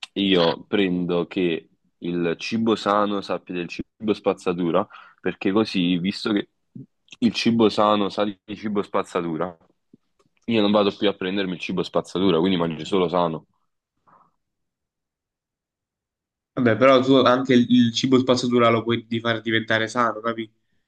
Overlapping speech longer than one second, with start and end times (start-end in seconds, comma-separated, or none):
none